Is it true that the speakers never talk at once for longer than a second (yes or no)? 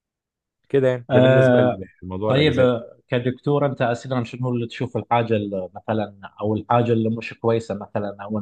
yes